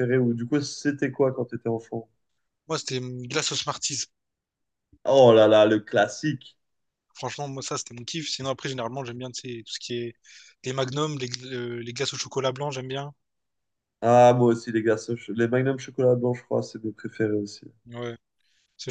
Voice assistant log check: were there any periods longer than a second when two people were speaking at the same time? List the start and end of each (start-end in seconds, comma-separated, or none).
none